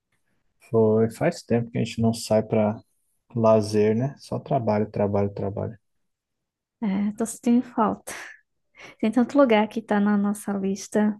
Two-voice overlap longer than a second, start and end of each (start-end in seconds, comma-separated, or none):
none